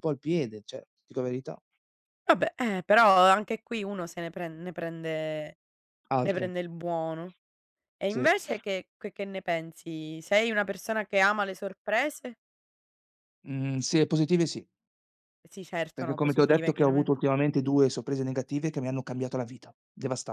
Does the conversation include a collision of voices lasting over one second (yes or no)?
yes